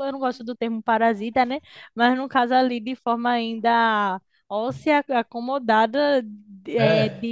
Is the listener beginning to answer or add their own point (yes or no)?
no